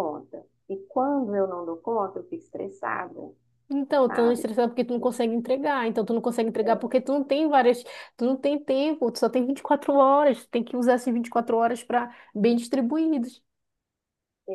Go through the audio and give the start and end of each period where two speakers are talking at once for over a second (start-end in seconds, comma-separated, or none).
none